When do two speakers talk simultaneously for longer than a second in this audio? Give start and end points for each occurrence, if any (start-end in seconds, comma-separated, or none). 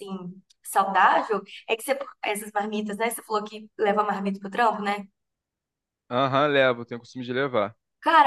none